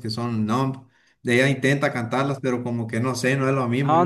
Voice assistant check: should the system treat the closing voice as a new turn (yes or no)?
yes